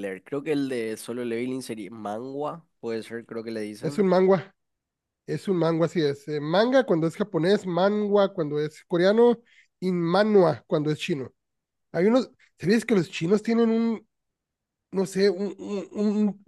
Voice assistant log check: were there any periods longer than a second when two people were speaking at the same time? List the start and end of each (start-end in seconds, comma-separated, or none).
none